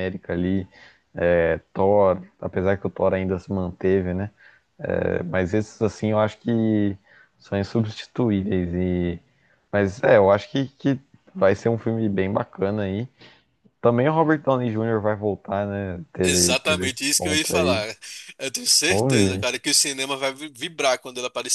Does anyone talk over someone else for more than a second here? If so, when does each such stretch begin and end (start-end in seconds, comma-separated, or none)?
16.2-17.8